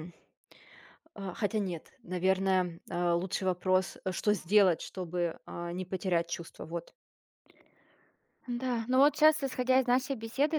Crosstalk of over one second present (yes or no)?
no